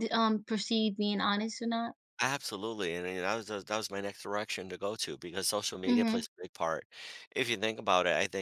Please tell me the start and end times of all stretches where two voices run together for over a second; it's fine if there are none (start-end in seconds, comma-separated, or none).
none